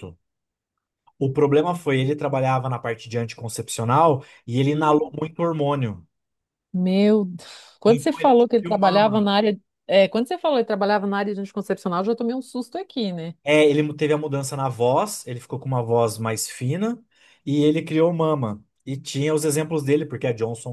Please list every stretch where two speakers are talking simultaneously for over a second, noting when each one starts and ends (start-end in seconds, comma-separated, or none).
7.9-9.3